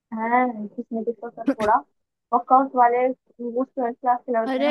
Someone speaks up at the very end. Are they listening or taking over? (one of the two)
taking over